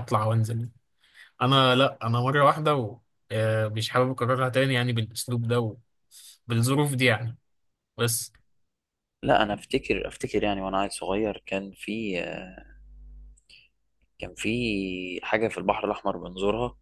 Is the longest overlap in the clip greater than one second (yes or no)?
no